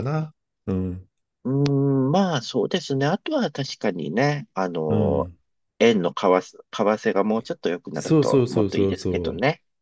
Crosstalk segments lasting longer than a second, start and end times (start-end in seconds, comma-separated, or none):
7.9-9.3